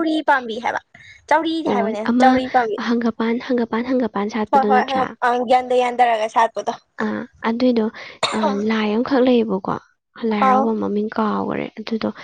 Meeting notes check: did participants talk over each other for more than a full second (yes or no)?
no